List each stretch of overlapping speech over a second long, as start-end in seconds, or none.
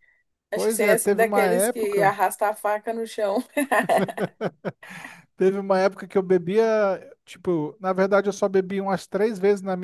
0.5-2.2